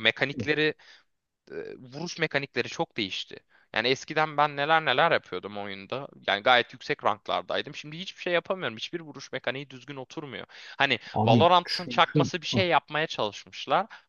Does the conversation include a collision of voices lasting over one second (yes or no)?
yes